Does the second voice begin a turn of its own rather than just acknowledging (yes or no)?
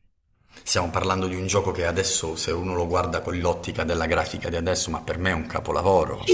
yes